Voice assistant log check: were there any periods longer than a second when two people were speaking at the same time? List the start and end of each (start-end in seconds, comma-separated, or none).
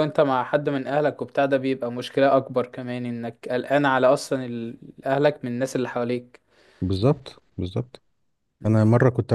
none